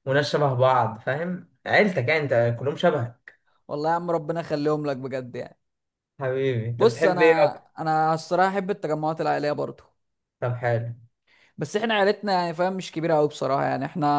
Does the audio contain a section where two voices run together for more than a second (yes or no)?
no